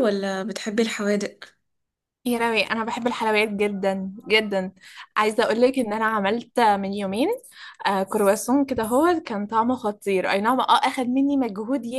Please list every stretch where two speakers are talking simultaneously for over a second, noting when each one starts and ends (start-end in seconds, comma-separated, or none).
none